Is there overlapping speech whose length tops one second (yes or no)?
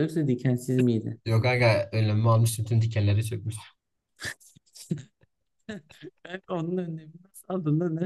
no